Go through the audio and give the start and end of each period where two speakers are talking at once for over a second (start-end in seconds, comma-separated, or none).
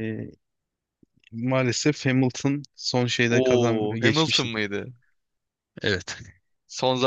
3.3-4.5